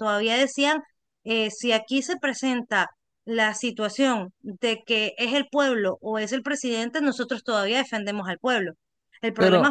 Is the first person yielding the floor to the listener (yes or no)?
no